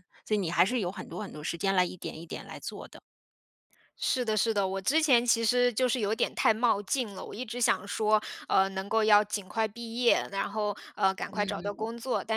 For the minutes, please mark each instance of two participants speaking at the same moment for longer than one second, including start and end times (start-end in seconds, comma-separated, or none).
none